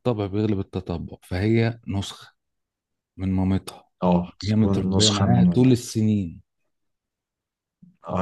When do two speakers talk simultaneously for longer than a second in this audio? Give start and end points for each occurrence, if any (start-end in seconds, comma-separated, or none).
4.4-5.9